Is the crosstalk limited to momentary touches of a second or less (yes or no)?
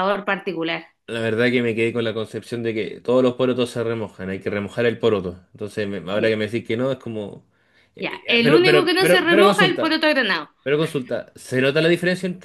no